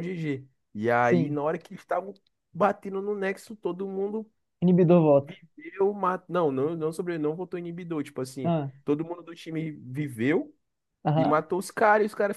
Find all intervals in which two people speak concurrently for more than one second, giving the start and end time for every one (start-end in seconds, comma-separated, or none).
none